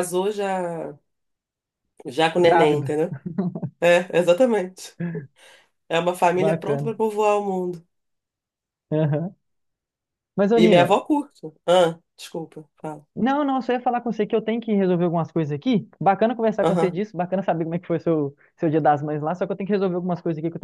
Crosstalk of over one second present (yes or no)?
no